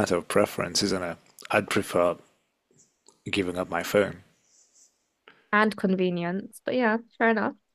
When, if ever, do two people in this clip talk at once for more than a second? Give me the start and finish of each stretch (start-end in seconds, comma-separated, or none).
none